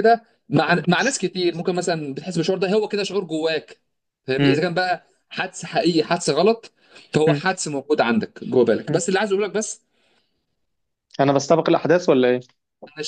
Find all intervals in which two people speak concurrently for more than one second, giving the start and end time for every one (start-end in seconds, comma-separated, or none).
none